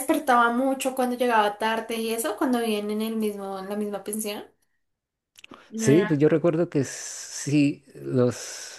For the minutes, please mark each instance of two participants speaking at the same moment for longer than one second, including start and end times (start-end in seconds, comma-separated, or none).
none